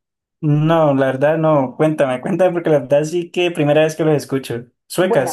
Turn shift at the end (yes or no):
yes